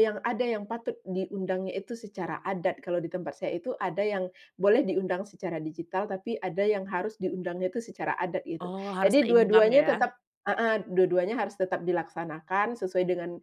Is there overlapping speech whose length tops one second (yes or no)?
yes